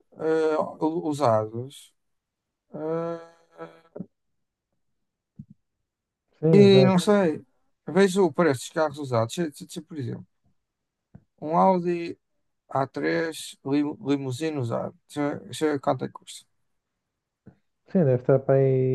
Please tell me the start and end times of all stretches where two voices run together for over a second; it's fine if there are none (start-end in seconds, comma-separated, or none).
none